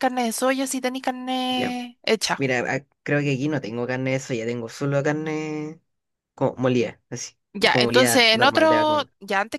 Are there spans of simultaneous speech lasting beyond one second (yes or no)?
yes